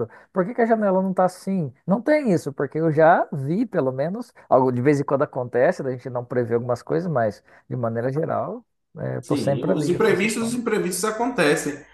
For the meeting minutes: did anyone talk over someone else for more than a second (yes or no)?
yes